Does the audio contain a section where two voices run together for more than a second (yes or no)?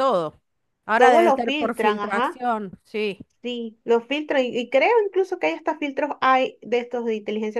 yes